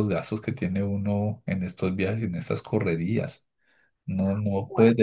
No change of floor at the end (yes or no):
yes